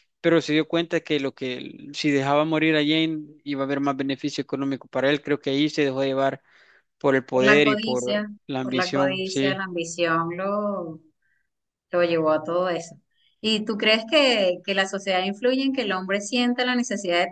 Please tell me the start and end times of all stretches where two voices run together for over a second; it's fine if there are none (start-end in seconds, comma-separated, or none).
7.3-9.6